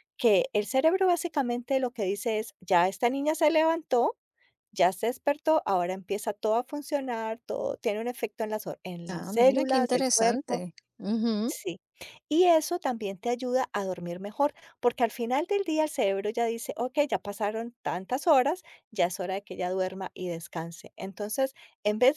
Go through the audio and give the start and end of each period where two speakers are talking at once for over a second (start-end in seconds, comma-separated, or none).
9.1-10.6